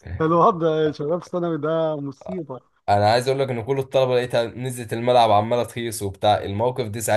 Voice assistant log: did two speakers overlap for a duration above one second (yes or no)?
no